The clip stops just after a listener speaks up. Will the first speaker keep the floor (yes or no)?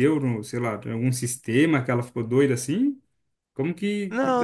no